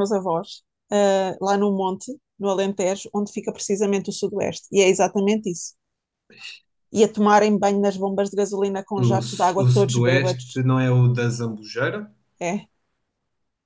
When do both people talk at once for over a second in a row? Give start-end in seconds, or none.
9.0-10.6